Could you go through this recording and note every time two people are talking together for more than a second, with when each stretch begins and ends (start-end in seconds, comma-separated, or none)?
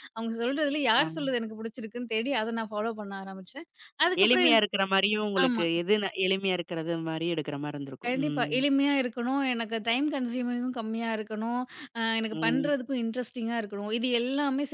none